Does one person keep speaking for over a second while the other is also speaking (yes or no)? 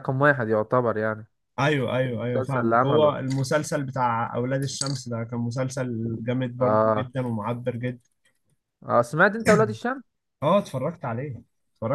yes